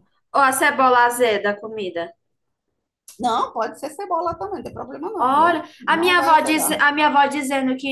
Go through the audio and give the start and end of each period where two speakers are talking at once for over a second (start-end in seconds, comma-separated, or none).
5.2-6.8